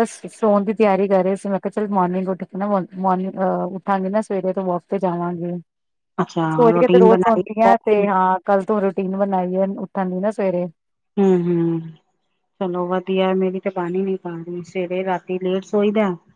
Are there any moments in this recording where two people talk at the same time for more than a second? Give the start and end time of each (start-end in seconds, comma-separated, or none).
6.6-8.0